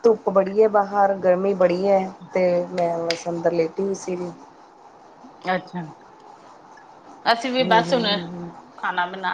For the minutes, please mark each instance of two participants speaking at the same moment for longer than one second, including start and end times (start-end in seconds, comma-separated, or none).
none